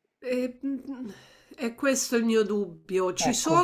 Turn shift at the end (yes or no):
no